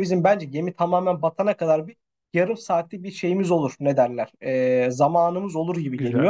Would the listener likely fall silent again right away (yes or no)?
yes